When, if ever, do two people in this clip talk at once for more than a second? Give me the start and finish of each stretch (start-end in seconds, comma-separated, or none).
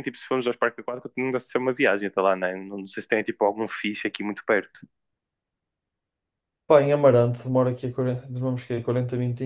none